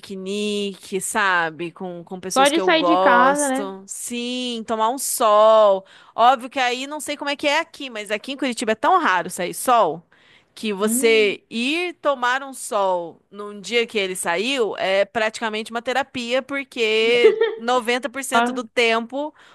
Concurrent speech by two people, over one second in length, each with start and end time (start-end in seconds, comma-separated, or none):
2.3-3.7